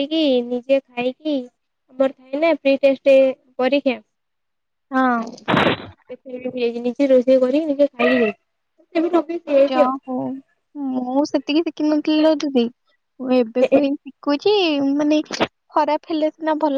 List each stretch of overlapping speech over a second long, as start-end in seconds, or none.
none